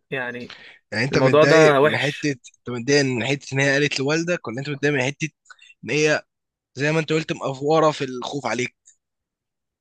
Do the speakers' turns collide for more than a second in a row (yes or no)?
yes